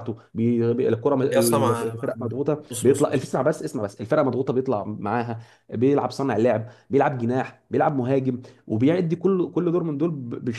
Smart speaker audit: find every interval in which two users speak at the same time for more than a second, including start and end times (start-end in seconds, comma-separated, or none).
1.3-3.3